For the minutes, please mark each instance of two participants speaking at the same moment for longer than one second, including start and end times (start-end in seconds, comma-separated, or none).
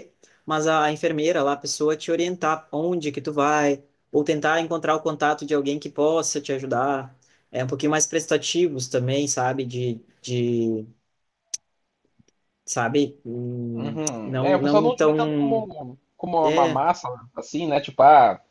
13.7-15.7